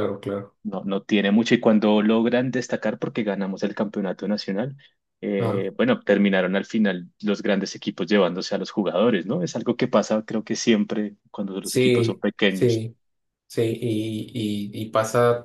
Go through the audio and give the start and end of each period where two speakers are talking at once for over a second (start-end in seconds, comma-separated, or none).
11.6-12.9